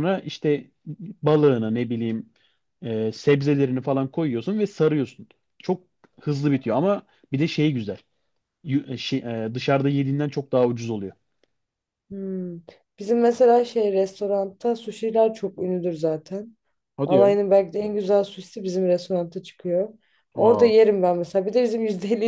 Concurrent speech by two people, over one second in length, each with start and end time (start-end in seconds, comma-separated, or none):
none